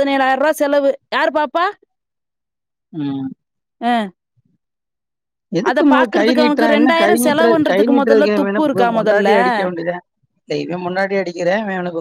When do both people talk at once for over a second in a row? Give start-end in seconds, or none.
5.7-9.4